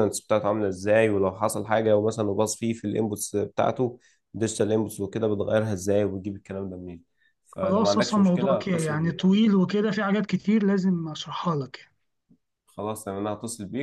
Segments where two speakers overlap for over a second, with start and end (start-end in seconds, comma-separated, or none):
8.0-9.3